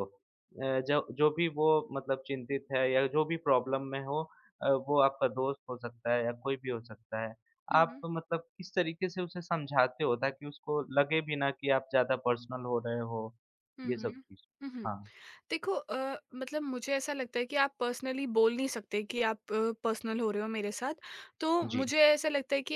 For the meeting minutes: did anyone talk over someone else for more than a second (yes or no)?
no